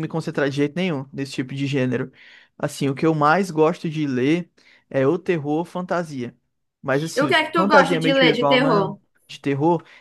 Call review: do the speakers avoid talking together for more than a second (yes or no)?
no